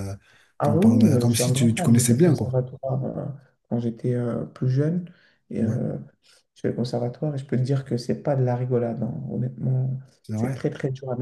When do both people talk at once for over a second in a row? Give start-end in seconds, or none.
0.6-2.6